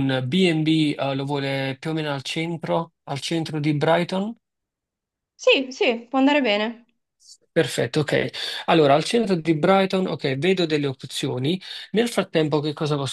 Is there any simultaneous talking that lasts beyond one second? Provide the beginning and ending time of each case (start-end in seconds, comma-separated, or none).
none